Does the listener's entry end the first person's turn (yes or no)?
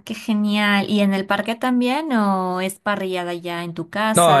yes